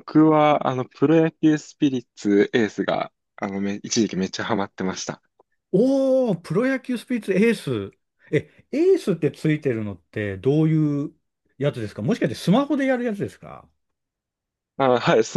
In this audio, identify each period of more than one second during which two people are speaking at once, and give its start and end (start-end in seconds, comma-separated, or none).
none